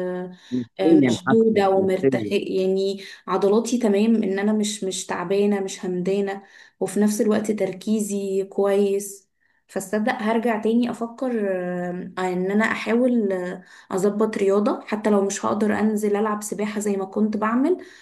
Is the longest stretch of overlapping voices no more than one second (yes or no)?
no